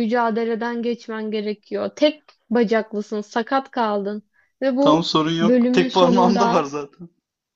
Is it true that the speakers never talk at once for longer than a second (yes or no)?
no